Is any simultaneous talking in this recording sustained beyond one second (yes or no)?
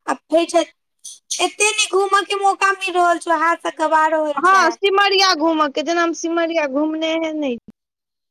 no